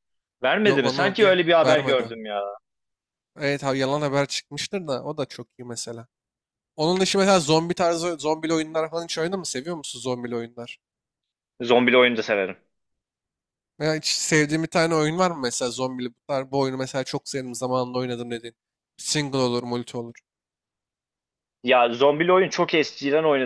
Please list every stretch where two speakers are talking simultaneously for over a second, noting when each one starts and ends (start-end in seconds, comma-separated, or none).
0.6-2.1